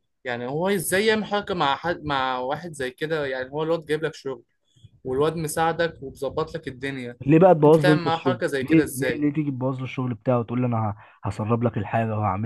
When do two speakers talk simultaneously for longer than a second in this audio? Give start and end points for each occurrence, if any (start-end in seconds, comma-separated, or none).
7.7-9.2